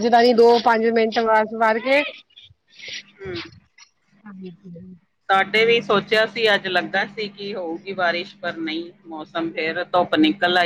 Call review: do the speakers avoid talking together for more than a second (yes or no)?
yes